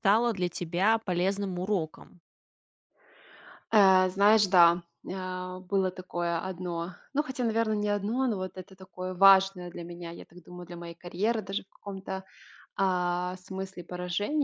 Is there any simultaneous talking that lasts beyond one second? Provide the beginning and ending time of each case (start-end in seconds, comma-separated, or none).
none